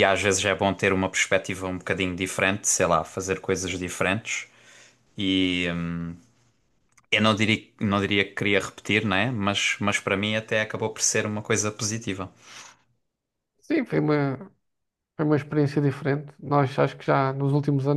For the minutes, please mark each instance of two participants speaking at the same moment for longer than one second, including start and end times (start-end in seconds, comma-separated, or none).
none